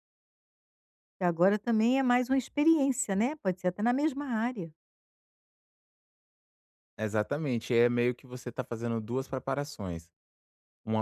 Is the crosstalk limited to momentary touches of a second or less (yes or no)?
yes